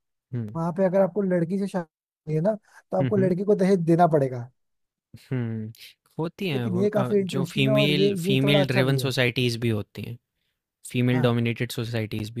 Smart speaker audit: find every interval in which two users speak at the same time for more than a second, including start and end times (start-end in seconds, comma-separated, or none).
6.5-9.1